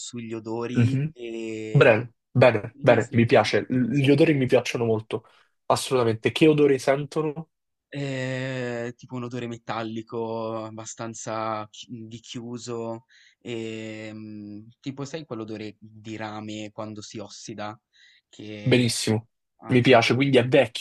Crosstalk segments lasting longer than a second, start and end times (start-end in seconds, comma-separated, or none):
2.6-4.4